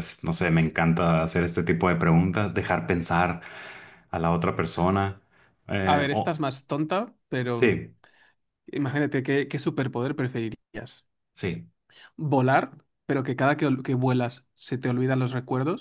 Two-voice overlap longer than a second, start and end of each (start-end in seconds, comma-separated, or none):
none